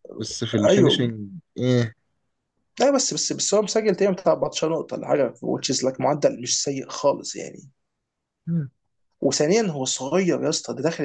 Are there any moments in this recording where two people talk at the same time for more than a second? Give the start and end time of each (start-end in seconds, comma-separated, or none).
none